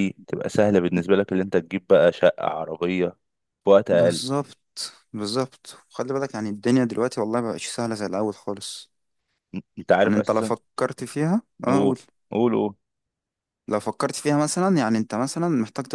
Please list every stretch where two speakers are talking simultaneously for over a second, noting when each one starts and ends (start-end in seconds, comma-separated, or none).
none